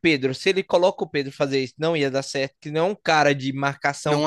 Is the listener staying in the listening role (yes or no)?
no